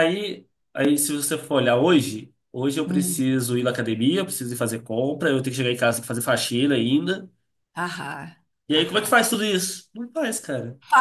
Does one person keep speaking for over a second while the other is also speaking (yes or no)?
no